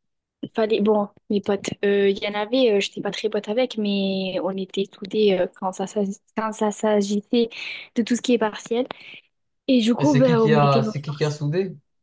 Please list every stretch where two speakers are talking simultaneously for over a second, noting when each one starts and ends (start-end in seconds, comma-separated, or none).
10.0-11.4